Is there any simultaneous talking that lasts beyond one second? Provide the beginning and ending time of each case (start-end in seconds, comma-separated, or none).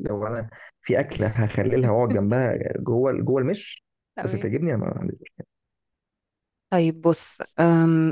none